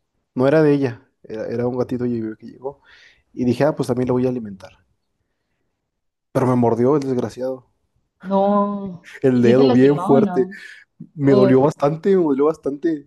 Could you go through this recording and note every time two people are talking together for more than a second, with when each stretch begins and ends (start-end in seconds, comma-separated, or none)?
9.2-10.5